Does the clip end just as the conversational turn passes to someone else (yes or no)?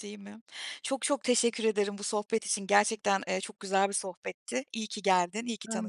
yes